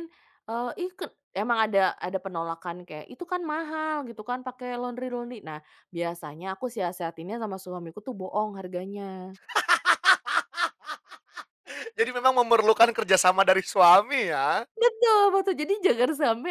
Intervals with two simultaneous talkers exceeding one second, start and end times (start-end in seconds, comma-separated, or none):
none